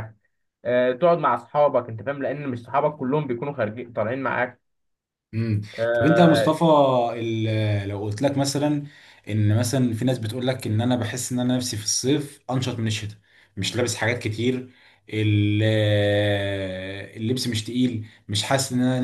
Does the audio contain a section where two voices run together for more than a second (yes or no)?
no